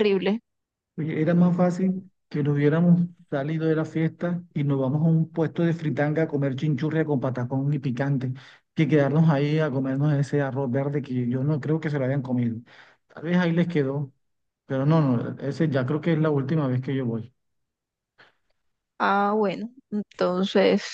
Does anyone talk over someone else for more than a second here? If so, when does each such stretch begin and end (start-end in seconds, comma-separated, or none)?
none